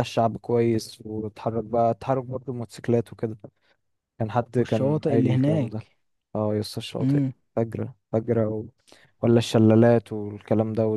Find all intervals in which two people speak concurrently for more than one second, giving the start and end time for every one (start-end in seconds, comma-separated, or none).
4.6-5.9